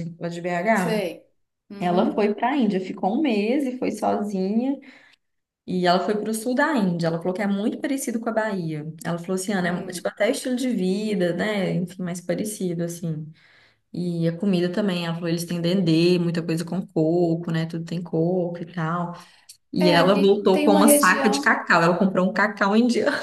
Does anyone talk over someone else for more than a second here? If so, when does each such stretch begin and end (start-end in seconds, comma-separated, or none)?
19.8-21.6